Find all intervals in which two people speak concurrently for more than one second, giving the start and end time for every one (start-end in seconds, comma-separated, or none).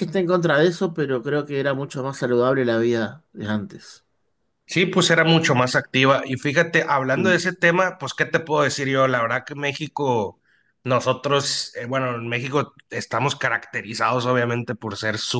none